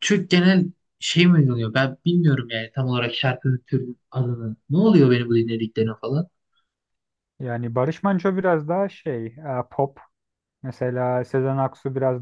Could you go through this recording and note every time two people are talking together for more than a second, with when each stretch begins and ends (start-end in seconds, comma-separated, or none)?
none